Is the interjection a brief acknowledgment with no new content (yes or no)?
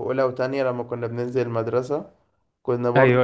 yes